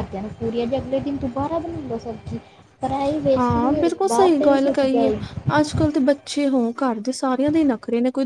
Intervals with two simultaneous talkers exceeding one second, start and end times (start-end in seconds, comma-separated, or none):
3.4-5.1